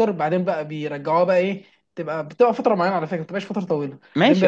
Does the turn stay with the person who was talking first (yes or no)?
no